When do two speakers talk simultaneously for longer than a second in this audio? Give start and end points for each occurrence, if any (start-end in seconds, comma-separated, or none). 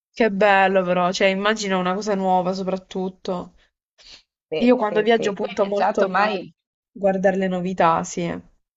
4.6-6.4